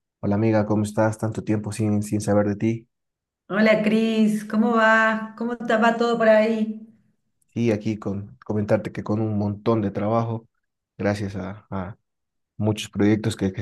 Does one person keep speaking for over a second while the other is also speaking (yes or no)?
no